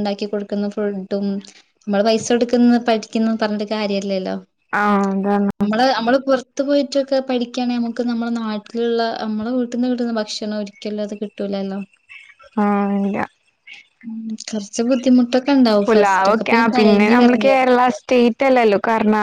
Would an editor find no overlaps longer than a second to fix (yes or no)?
no